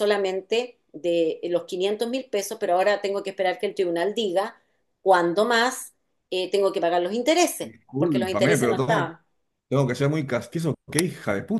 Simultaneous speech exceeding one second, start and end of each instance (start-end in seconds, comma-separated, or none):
7.6-9.1